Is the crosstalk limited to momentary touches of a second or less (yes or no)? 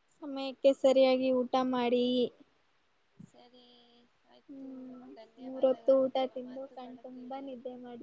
no